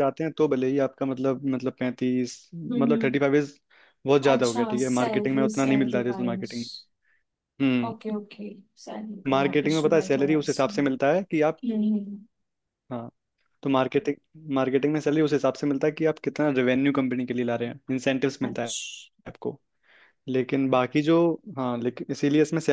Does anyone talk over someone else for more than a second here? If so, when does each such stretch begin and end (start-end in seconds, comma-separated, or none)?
4.3-6.5, 9.3-10.7